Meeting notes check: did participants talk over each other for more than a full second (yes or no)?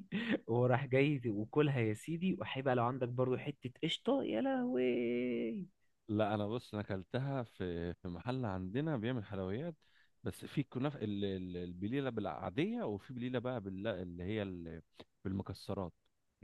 no